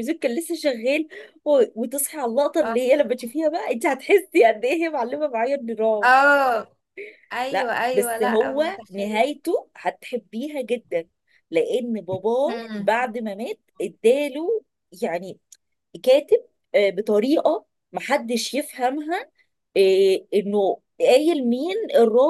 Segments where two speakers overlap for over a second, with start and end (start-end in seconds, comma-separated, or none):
7.5-9.3